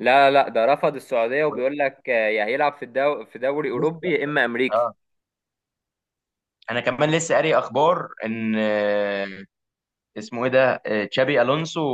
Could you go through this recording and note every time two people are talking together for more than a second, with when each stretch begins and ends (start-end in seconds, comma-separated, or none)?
none